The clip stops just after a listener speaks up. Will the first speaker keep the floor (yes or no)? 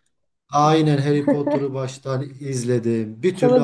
no